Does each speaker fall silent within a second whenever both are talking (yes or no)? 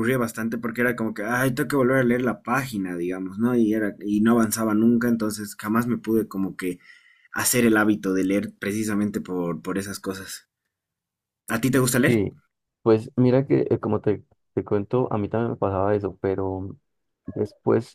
yes